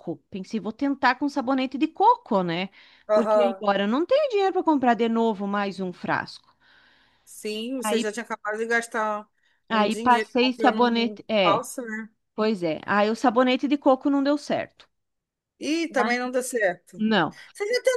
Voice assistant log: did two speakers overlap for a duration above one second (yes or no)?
yes